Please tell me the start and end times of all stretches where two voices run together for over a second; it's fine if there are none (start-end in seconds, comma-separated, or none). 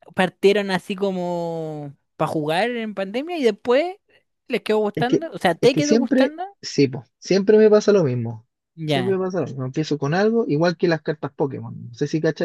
5.0-6.4